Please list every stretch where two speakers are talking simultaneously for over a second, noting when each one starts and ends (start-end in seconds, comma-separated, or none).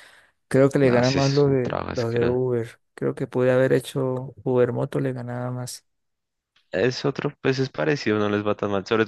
0.8-2.4